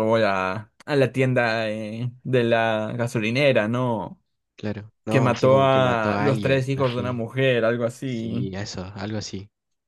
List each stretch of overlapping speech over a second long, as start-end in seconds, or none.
5.1-7.2